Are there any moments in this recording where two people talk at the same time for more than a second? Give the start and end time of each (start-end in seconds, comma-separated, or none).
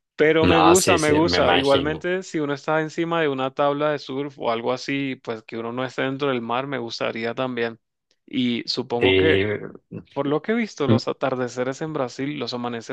0.5-2.0